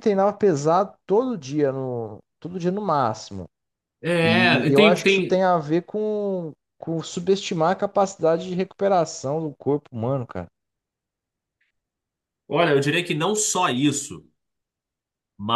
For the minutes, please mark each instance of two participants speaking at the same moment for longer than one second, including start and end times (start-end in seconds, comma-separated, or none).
4.2-5.4